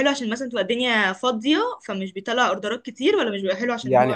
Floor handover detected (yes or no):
yes